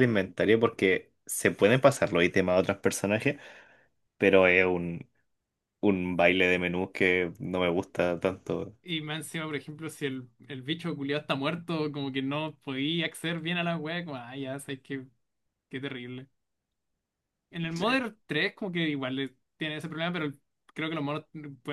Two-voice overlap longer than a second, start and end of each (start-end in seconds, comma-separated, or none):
none